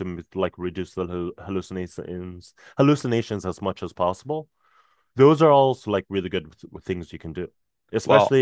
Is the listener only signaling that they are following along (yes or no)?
yes